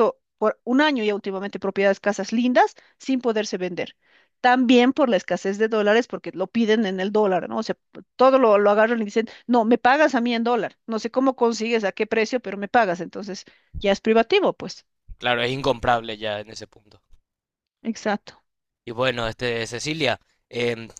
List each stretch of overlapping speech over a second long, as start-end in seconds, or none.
none